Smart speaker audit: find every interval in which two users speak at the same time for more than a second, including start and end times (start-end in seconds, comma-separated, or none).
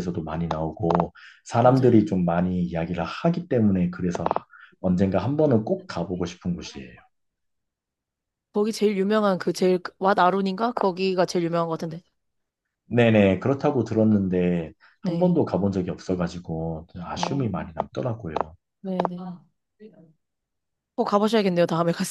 none